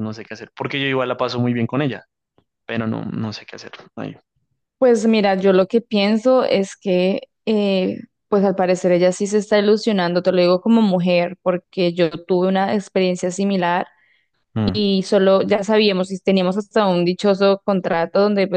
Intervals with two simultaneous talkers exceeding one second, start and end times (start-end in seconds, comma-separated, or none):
none